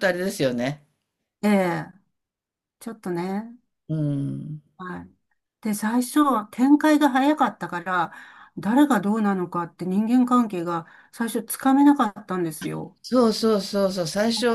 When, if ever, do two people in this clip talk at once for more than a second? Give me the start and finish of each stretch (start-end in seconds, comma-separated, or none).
none